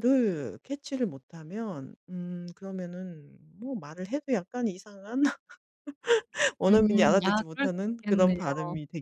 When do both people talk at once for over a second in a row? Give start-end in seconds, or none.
6.7-8.4